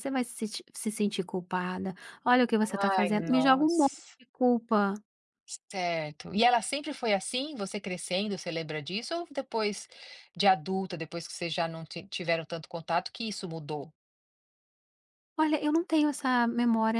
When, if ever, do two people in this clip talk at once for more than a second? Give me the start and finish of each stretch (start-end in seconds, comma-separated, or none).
2.9-4.2